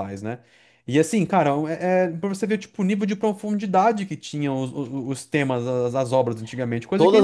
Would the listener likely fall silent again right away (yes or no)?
no